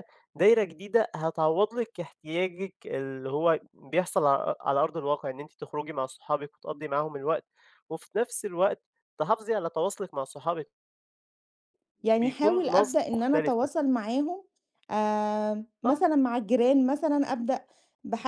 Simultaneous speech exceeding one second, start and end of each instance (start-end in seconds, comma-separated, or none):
12.2-13.7